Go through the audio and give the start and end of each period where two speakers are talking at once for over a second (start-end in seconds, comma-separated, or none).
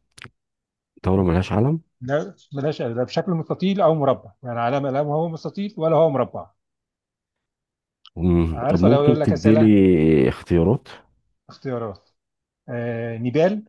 8.5-9.7